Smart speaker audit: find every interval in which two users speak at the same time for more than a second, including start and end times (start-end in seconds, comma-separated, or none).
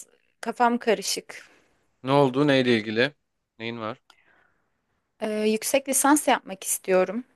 none